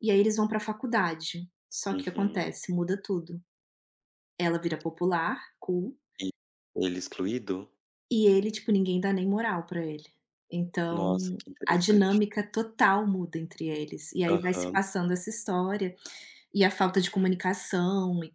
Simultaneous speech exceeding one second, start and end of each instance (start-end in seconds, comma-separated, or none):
10.9-12.2